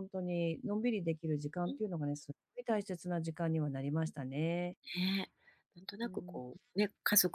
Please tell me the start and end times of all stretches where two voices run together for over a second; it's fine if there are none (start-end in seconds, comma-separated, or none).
none